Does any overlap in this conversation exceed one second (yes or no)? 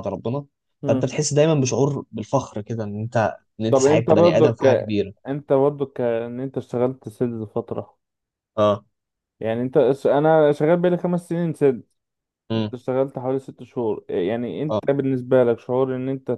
yes